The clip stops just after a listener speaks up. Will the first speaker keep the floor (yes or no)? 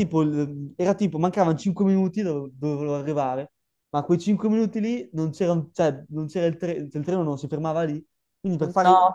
yes